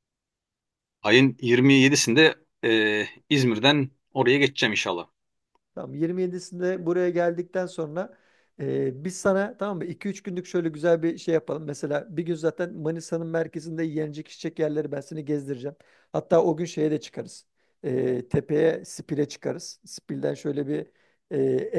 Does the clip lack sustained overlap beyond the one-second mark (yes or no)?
yes